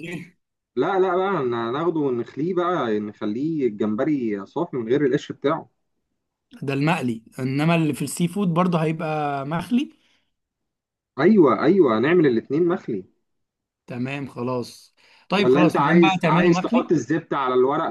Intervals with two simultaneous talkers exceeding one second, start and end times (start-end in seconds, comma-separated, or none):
15.3-16.9